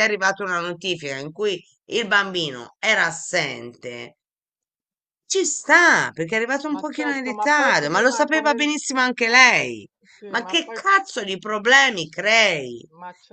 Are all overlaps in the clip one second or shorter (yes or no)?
no